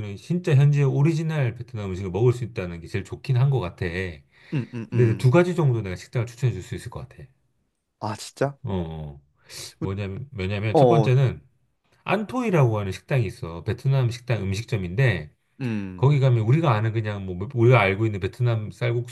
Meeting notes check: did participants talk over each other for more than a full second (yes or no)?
no